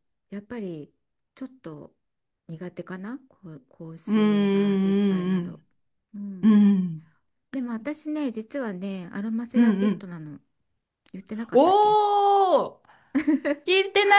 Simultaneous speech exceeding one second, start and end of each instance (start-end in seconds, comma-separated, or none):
4.1-5.6